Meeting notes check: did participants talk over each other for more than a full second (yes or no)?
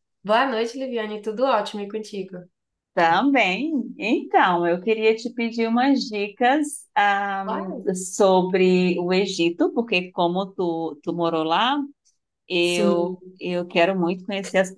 no